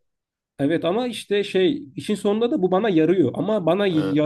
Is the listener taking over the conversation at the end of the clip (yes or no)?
no